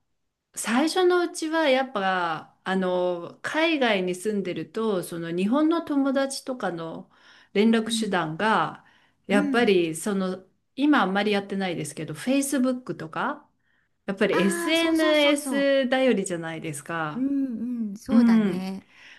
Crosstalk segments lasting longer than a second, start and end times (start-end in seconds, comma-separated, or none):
14.3-15.7